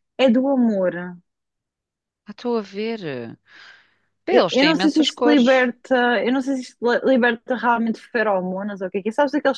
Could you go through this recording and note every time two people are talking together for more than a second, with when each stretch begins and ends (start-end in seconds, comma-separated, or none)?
4.3-5.7